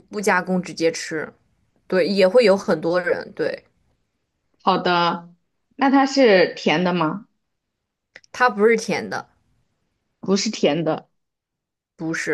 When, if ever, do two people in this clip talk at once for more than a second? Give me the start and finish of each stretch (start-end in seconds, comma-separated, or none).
none